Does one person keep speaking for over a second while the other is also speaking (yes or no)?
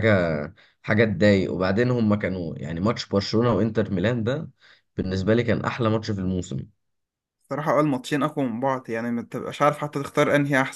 no